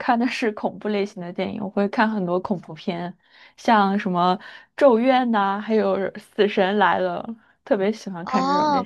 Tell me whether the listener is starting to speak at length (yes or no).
yes